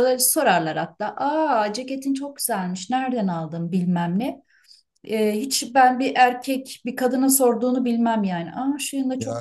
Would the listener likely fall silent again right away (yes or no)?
no